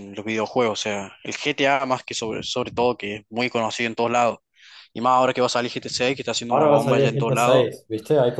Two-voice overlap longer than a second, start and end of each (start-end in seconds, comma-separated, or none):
6.5-7.7